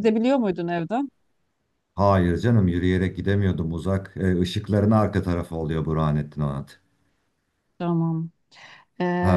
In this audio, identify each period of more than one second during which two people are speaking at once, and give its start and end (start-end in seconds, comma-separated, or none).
none